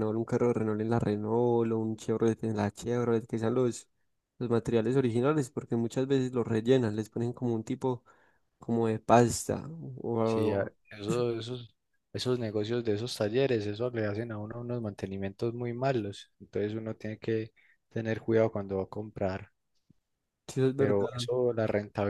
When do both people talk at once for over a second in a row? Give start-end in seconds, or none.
none